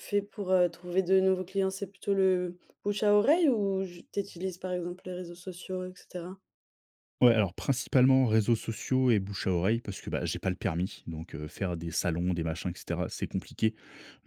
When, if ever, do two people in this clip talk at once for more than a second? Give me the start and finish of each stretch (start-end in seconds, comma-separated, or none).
none